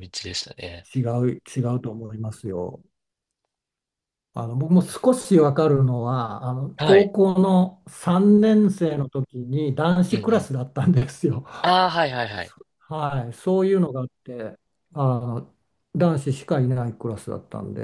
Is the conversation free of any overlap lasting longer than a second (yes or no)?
yes